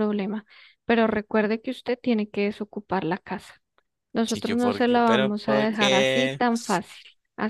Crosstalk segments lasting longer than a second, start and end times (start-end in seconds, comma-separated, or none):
4.3-6.4